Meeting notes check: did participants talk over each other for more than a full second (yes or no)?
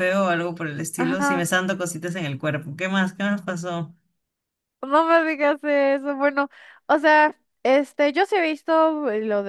no